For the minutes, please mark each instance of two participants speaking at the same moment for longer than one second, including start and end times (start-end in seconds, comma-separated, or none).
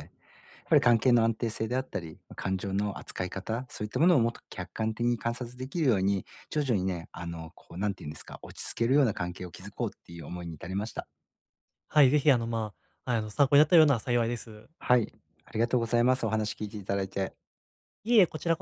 none